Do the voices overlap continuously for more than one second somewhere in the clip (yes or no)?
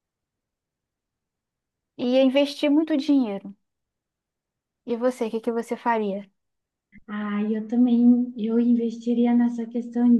no